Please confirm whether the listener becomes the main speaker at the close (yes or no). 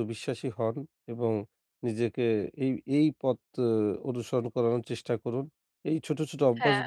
no